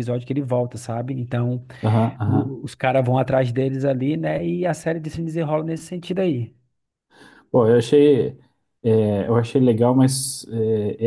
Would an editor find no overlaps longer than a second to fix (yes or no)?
yes